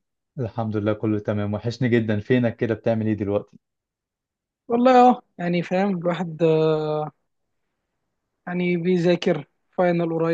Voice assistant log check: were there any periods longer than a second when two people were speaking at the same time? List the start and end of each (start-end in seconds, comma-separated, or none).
none